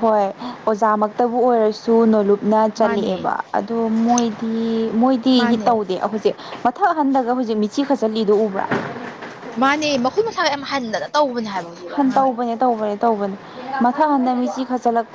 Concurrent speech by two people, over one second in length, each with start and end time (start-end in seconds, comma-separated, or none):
none